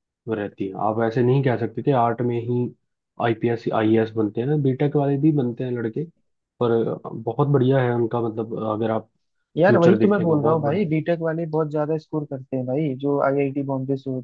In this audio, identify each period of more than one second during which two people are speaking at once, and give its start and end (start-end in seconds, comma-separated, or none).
9.7-10.9